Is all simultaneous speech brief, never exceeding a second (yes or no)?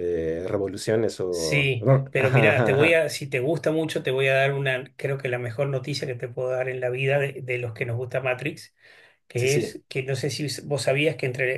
no